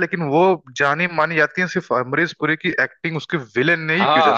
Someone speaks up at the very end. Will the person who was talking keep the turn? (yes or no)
no